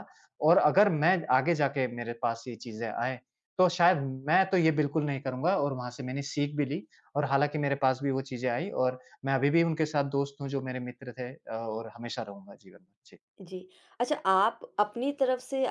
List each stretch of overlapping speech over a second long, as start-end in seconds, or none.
none